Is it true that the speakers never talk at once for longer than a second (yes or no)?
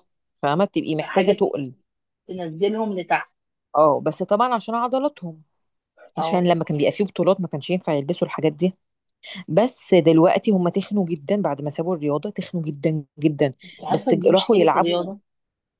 no